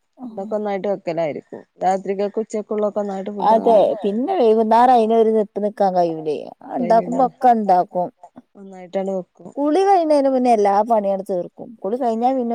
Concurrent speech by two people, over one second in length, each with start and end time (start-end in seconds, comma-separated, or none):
none